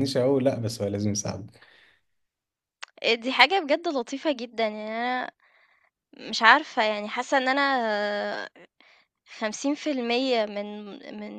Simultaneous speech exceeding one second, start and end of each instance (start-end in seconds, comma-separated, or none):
none